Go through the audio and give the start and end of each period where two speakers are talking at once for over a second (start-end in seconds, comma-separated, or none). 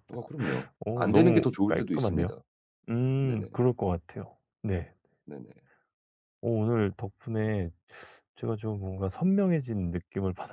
0.8-2.3